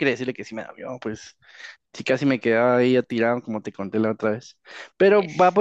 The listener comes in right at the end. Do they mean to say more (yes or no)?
no